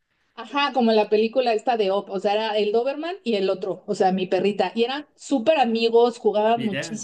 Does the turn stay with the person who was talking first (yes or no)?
yes